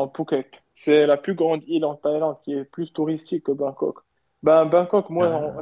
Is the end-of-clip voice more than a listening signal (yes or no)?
no